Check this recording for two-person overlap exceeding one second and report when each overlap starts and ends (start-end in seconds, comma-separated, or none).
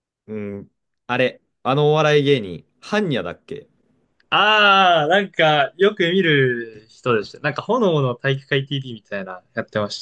none